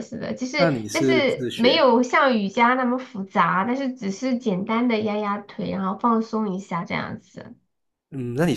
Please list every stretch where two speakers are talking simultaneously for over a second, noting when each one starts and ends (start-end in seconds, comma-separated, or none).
0.6-1.8